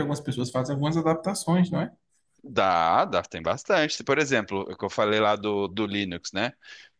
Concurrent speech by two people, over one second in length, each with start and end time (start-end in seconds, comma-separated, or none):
none